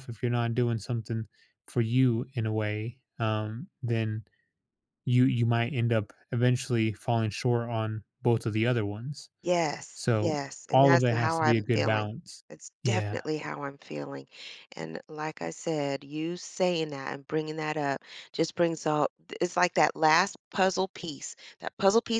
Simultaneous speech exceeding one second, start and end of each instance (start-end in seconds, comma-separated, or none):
9.9-12.1